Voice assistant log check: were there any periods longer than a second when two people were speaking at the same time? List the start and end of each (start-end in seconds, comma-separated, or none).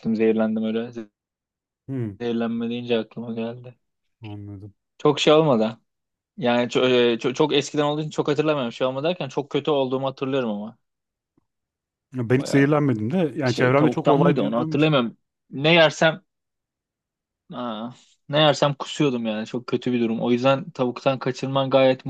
13.4-14.9